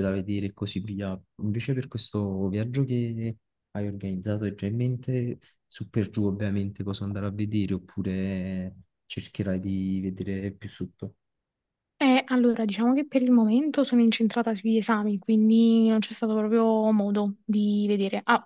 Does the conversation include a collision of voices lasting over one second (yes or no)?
no